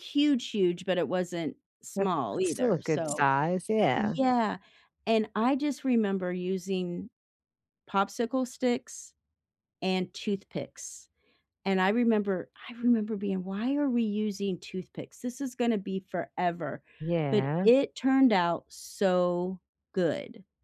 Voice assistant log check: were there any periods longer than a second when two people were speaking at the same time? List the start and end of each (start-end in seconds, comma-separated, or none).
2.0-3.3